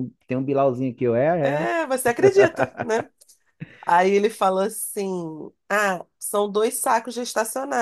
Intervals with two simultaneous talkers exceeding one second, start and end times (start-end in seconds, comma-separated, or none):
none